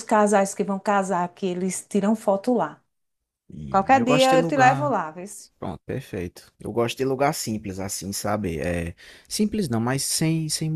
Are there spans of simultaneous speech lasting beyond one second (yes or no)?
yes